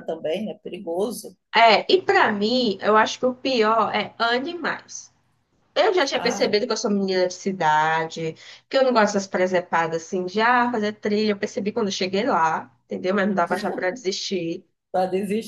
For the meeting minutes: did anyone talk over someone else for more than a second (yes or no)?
no